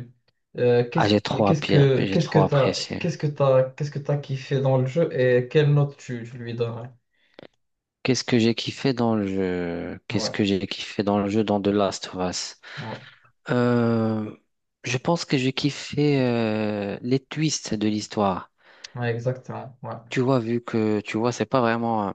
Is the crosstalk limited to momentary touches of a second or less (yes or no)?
no